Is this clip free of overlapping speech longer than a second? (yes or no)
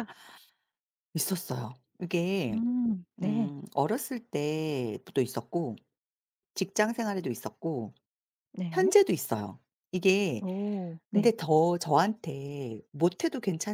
yes